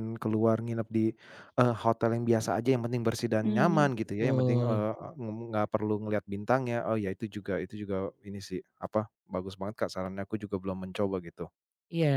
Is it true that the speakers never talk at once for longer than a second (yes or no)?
no